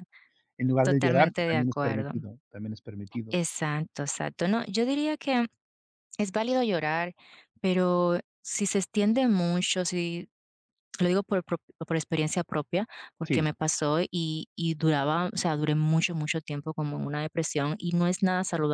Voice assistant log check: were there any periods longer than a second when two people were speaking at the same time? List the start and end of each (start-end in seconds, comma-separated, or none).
0.8-2.1